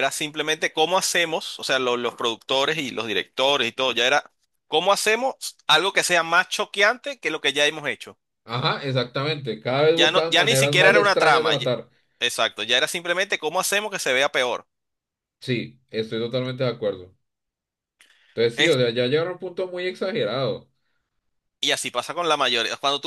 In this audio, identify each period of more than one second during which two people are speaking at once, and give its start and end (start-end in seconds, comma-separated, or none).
9.9-11.7